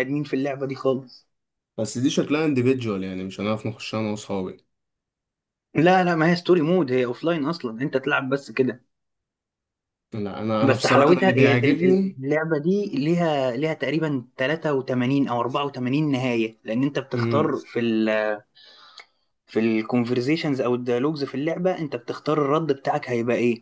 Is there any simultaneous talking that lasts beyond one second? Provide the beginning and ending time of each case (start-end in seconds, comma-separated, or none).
10.6-12.2